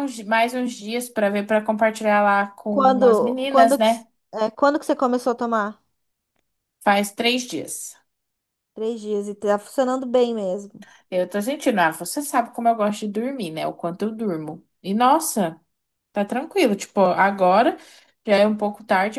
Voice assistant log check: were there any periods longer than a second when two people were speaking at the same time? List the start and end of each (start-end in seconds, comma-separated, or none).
2.7-4.1